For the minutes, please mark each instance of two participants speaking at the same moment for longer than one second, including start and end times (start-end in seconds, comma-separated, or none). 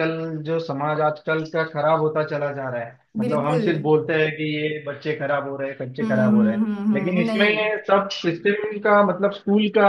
6.0-7.5